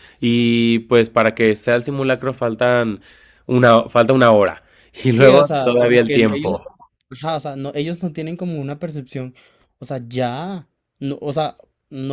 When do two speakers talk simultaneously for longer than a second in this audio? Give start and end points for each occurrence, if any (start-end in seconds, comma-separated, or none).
5.1-6.6